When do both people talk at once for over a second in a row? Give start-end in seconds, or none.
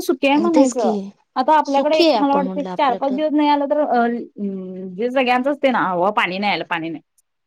1.6-3.2